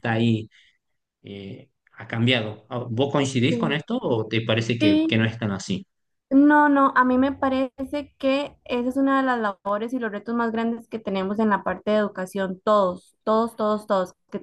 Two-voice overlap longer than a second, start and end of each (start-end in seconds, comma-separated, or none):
none